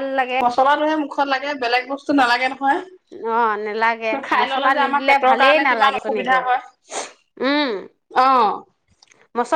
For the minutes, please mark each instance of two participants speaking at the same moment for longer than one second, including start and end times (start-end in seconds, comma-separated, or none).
4.3-6.4